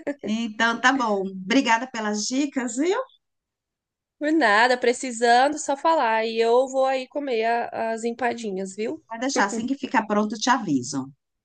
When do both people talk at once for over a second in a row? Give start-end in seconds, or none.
none